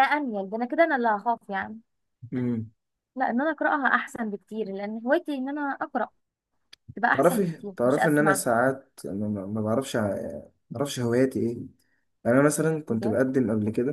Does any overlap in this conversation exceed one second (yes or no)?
yes